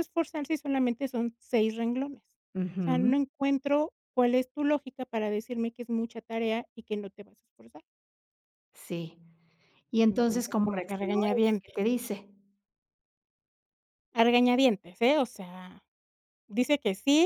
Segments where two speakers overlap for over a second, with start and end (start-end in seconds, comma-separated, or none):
10.1-11.8